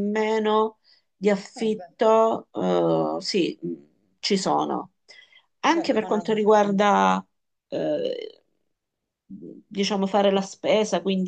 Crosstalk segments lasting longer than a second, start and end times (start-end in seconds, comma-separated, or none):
5.7-6.9